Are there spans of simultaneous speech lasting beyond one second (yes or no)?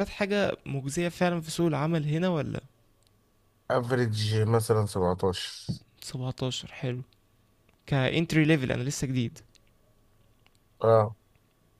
no